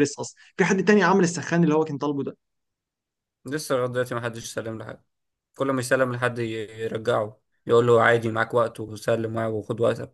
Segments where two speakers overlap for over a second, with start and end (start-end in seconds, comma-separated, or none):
none